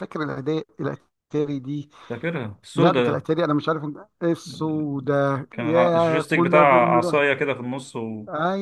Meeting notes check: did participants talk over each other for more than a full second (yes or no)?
yes